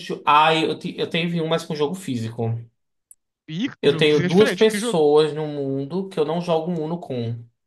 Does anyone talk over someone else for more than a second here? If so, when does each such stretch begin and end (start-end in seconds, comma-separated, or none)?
3.8-5.0